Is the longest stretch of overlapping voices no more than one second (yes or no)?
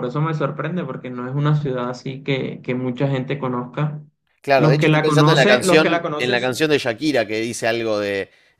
no